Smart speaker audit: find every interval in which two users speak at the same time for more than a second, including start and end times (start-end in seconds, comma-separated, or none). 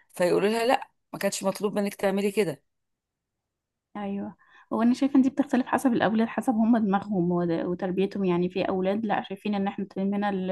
none